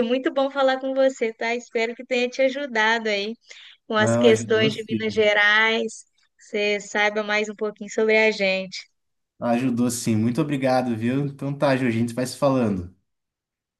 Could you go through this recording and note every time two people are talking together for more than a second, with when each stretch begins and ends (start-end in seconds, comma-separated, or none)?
4.0-5.3